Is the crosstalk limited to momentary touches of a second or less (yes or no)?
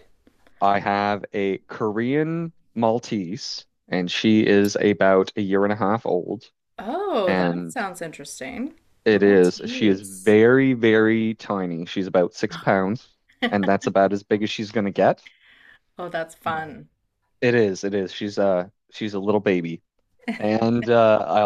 no